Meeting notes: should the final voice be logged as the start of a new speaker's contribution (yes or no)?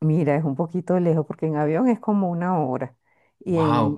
no